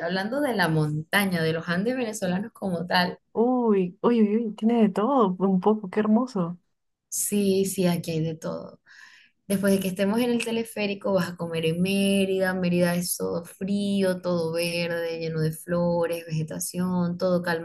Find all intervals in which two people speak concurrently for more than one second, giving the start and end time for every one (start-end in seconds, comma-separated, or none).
none